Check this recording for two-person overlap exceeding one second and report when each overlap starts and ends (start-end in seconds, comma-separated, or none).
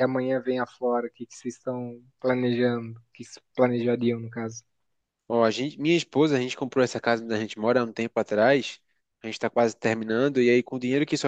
none